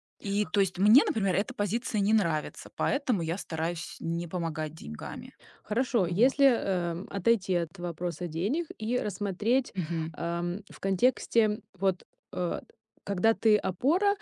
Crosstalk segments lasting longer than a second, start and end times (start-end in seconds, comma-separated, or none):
none